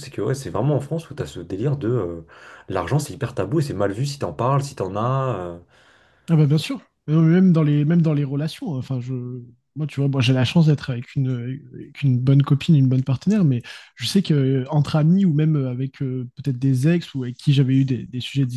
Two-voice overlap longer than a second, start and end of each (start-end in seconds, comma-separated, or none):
none